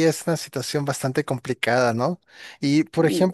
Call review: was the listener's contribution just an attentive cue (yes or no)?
yes